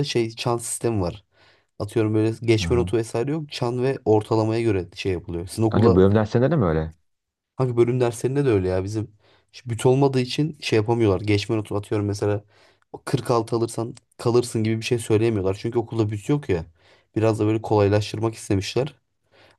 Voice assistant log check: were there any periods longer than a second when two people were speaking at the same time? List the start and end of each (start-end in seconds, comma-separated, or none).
none